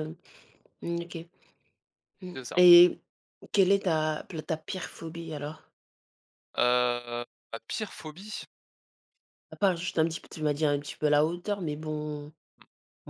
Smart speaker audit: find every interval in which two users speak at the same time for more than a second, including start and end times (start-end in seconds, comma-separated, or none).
none